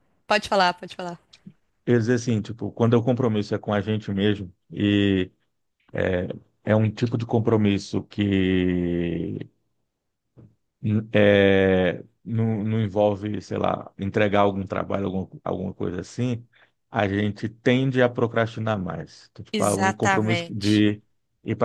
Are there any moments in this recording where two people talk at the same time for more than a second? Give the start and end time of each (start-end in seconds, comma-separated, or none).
19.5-20.9